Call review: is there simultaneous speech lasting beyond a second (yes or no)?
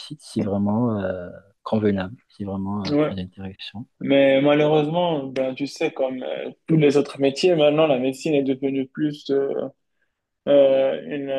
no